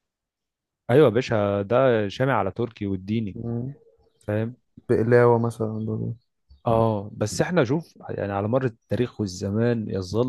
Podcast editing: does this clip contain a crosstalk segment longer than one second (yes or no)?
no